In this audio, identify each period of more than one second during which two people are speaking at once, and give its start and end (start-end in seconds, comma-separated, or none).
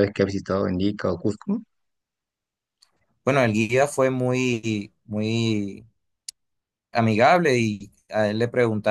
none